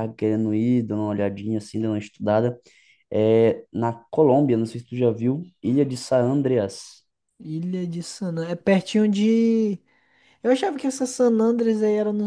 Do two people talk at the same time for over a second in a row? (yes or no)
no